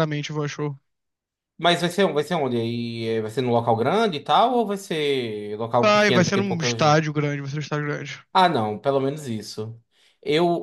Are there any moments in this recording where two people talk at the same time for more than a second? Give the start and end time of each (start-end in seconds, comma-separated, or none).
5.8-7.0